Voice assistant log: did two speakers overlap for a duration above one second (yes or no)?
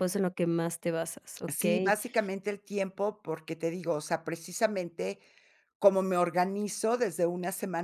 no